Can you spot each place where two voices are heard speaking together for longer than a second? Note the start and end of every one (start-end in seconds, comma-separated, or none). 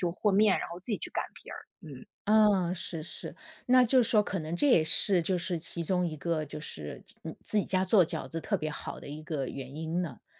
none